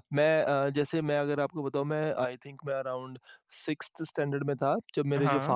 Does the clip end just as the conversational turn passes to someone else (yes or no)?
no